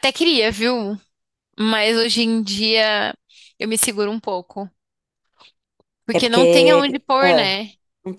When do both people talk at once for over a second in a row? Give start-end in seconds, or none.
6.1-7.5